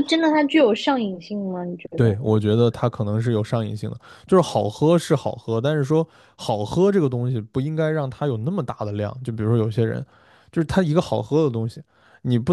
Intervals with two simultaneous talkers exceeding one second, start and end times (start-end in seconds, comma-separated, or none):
none